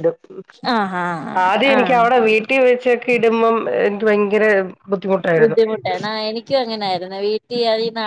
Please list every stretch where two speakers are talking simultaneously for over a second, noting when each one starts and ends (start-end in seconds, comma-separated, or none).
none